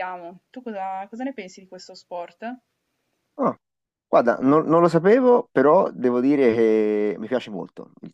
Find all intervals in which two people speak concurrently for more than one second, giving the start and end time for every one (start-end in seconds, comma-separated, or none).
none